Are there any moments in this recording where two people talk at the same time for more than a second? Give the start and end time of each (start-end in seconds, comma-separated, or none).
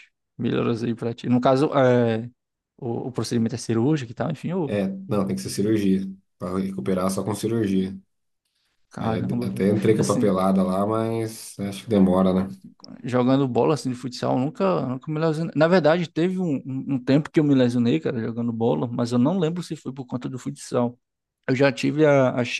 9.0-10.4